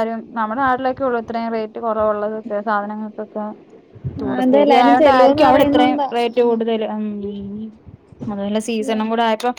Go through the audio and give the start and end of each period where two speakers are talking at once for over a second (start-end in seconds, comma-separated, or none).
4.4-6.1